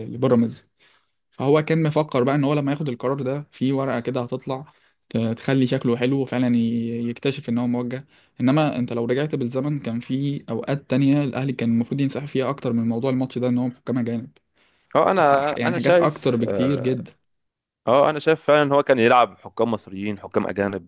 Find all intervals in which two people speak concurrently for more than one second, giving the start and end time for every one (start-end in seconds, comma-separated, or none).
15.2-17.0